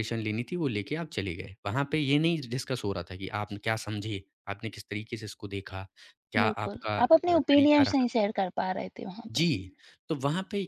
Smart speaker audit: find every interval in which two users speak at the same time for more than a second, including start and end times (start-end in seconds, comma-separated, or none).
6.4-8.1